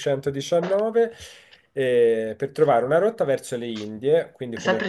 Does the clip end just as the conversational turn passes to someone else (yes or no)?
yes